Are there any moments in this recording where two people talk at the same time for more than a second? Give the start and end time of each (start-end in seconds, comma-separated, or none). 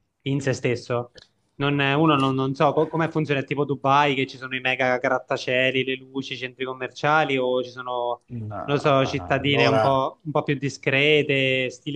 8.6-10.0